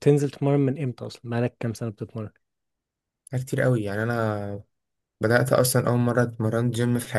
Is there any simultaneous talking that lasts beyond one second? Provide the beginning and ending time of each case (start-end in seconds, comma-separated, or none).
none